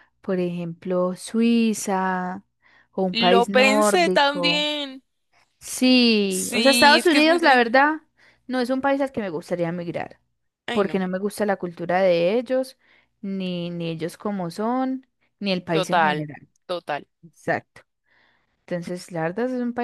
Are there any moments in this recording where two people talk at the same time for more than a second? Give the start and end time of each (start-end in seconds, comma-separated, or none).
3.1-4.7, 6.3-7.7